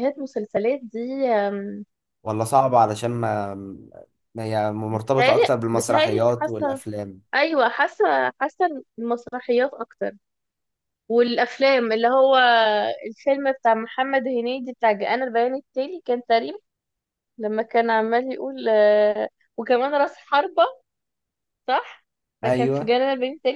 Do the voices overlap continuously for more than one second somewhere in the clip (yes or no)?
yes